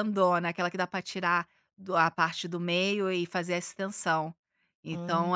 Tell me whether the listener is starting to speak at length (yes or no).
no